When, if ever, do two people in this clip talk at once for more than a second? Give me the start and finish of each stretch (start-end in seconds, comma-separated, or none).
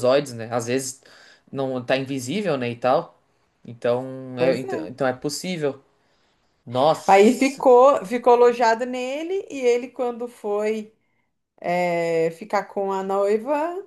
none